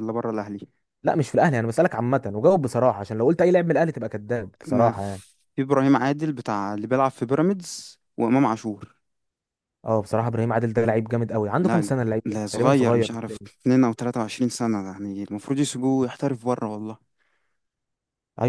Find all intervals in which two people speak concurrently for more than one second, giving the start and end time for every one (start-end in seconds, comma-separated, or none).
11.6-13.5